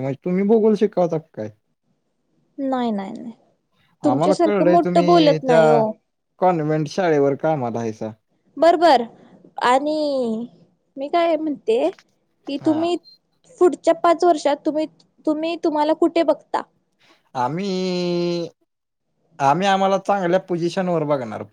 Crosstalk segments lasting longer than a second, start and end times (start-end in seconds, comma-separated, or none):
4.1-5.6